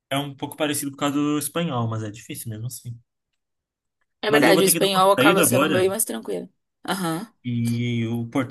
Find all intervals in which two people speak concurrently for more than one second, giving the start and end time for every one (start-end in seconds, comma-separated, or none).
4.3-5.8